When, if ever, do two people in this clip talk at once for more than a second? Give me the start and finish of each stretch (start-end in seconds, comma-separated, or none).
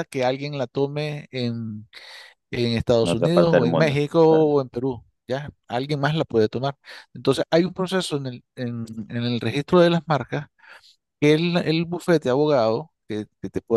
3.0-4.5